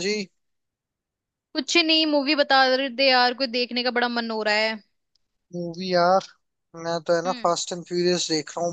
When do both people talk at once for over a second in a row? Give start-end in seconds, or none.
none